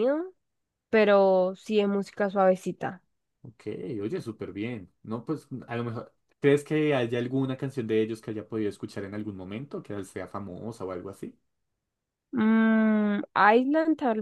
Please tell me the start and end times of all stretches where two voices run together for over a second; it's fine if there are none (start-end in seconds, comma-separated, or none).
none